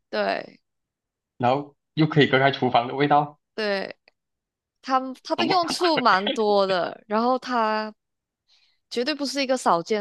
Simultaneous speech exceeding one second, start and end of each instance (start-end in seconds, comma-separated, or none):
none